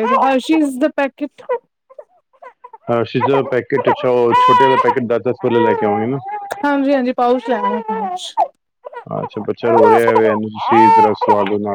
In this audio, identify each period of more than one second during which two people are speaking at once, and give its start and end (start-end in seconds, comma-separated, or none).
none